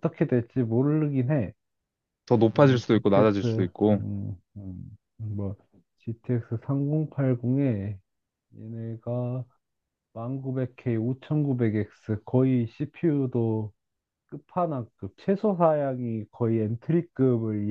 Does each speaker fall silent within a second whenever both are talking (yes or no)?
no